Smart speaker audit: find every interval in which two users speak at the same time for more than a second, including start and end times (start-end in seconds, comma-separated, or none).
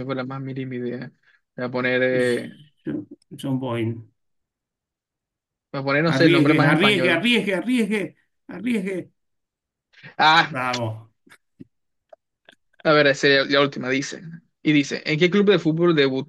6.1-7.3